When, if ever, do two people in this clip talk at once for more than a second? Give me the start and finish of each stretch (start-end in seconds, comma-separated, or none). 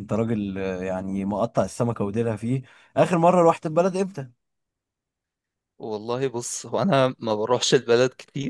none